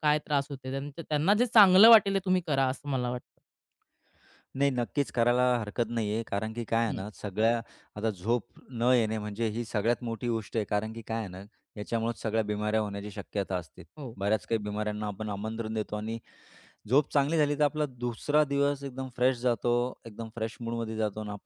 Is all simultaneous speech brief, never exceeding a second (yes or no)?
yes